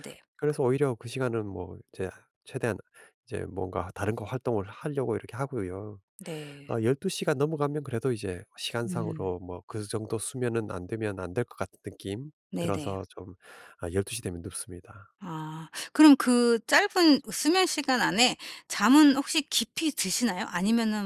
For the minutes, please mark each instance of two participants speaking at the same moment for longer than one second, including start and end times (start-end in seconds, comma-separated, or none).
none